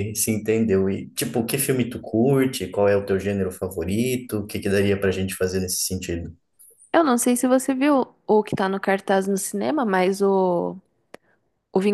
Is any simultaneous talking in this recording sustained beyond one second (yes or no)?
no